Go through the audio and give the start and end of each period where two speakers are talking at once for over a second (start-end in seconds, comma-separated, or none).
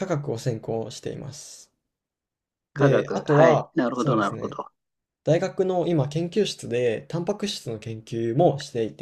2.7-4.6